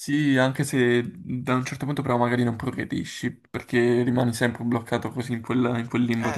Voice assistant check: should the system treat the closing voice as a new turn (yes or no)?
yes